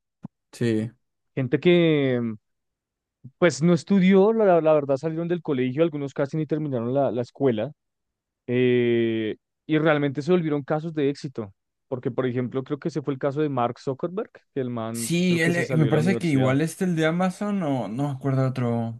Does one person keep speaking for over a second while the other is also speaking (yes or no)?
yes